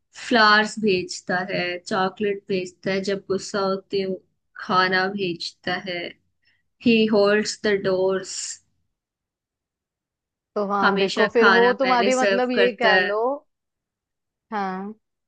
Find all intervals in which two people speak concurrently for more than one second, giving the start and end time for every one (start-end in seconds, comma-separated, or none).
10.8-13.1